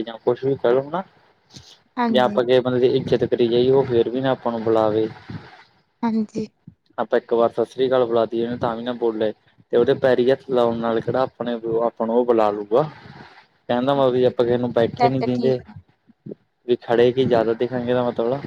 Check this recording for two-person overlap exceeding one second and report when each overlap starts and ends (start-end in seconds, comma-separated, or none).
14.0-15.6